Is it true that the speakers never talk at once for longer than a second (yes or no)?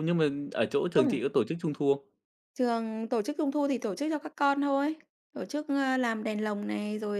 yes